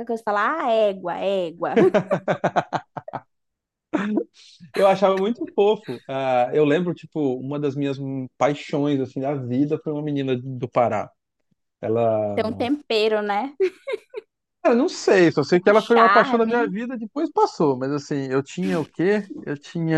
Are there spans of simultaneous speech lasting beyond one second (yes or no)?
yes